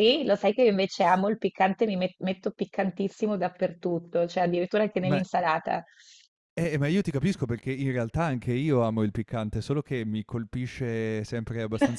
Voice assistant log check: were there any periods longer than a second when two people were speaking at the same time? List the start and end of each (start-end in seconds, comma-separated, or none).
none